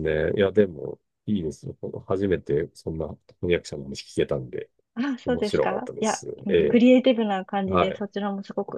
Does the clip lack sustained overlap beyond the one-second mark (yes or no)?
no